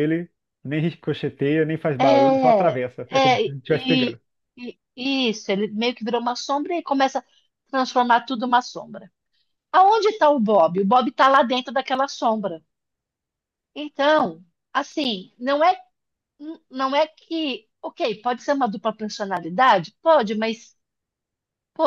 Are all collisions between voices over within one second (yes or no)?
no